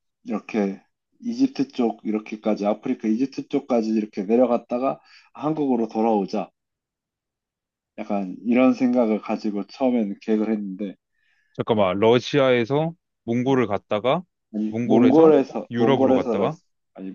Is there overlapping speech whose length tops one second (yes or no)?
yes